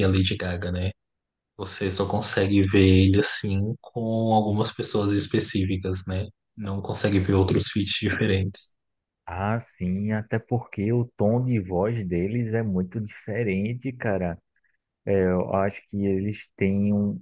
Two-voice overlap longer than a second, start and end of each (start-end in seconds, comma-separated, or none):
none